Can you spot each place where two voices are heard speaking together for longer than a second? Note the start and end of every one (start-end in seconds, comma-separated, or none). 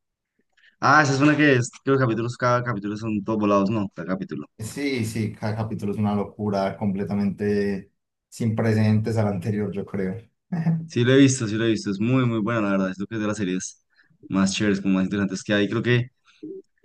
none